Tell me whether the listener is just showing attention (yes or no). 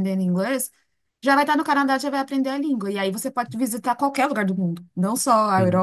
yes